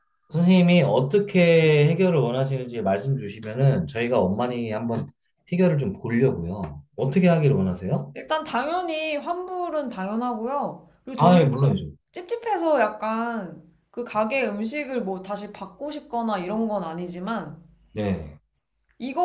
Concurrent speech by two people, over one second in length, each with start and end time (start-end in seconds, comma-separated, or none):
none